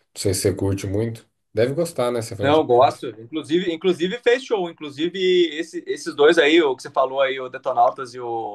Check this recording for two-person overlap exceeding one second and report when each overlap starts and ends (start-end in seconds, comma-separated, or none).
none